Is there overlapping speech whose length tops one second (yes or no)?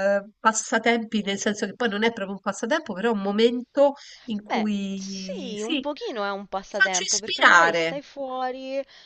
yes